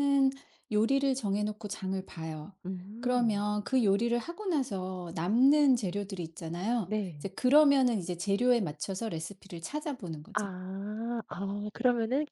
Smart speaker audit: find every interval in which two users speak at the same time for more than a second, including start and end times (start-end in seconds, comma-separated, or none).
none